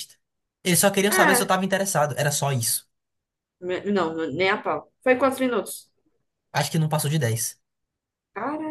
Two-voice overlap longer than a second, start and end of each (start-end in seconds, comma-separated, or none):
none